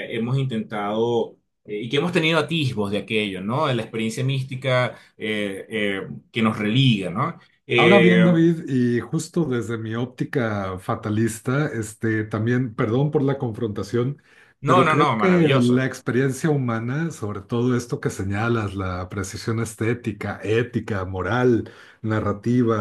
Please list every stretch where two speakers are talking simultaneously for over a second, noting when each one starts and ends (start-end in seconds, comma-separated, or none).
14.6-15.9